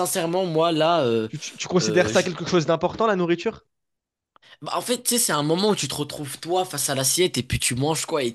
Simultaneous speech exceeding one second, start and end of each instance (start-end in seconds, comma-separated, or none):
none